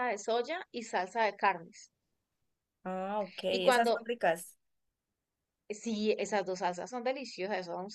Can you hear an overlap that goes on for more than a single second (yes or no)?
no